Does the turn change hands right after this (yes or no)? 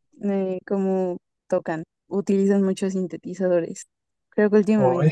no